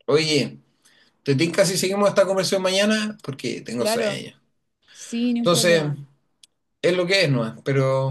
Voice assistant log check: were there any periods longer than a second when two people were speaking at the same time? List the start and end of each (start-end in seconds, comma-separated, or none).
none